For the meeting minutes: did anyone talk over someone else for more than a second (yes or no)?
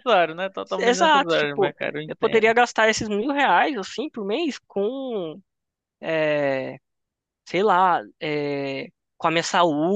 yes